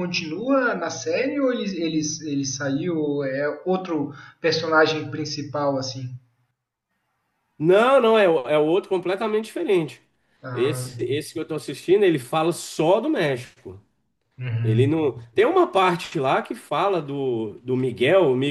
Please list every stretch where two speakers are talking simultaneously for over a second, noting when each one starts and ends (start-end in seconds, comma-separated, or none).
none